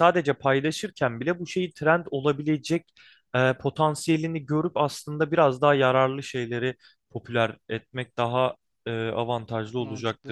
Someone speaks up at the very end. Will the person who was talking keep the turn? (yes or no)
no